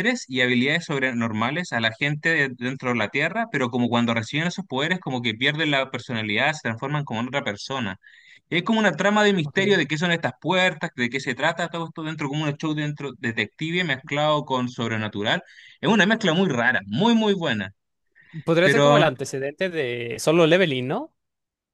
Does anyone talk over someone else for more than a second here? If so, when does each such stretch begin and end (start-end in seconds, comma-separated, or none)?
none